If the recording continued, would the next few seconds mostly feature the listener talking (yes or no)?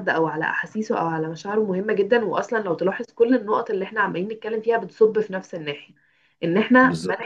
no